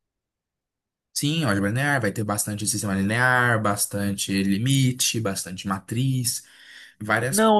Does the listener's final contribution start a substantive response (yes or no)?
yes